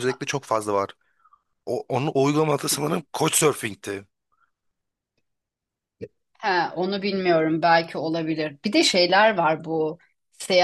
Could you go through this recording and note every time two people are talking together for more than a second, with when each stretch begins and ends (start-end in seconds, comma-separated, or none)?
none